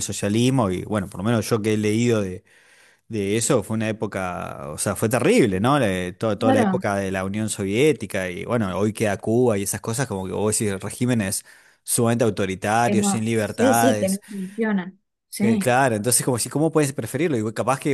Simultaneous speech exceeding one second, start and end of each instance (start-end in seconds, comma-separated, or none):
12.8-14.2